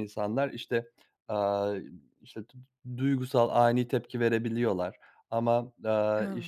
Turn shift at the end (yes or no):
no